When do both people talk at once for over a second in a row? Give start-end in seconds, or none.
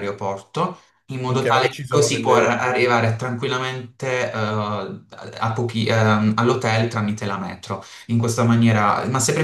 1.3-2.8